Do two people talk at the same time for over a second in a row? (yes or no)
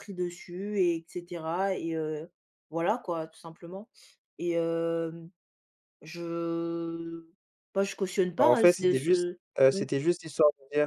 yes